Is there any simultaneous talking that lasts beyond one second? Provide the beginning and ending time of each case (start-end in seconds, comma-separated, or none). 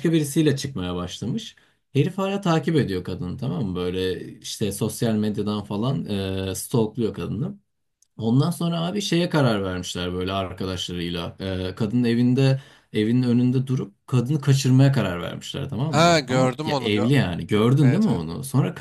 15.9-17.1